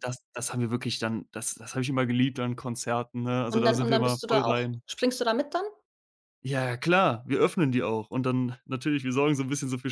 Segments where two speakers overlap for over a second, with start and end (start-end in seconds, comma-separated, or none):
3.5-4.8